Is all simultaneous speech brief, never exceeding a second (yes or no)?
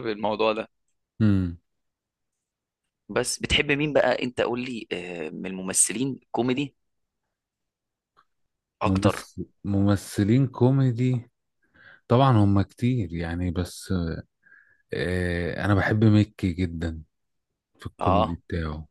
yes